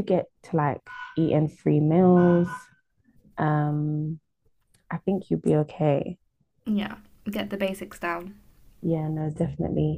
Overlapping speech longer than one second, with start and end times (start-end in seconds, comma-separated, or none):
none